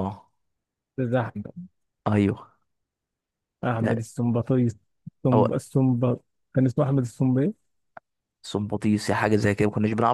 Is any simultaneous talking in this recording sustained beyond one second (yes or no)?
no